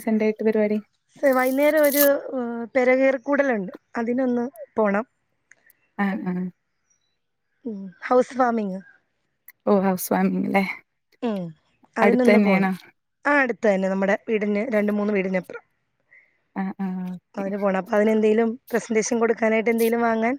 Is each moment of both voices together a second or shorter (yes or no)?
yes